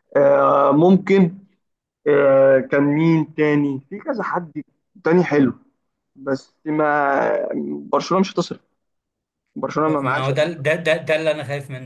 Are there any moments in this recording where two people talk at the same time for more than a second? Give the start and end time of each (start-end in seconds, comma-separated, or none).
none